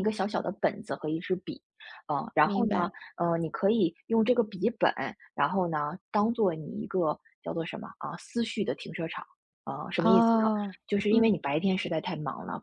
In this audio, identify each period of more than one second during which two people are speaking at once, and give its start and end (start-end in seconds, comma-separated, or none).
none